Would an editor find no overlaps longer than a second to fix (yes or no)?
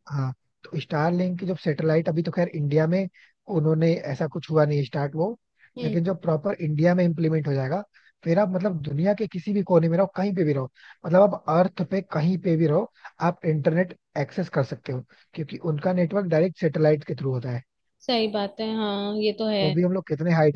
yes